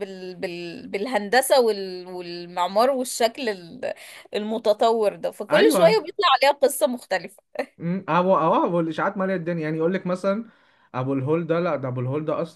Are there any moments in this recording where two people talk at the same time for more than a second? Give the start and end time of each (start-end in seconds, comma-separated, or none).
none